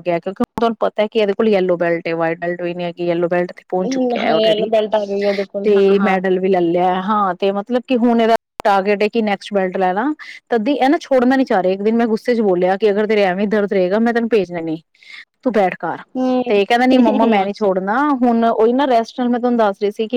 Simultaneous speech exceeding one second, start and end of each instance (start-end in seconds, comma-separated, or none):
none